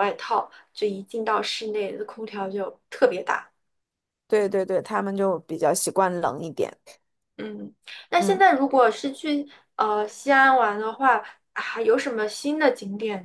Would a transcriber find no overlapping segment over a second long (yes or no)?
yes